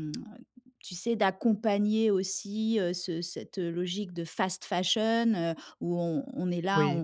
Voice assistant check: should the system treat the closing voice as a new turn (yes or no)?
no